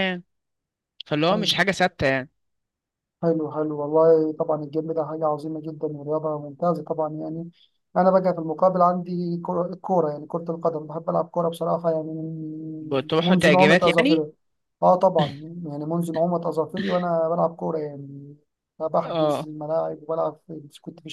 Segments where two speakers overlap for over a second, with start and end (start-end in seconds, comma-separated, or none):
12.8-14.3